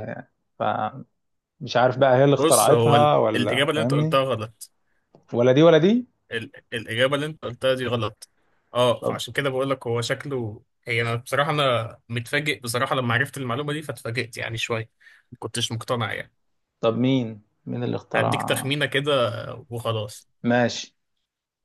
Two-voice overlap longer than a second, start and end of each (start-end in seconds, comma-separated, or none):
2.4-4.2